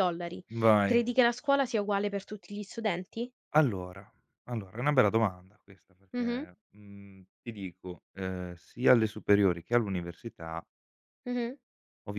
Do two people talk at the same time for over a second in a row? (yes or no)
no